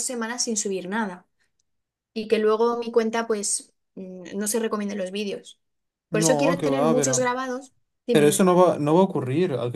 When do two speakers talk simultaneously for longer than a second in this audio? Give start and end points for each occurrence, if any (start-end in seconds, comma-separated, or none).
6.1-7.3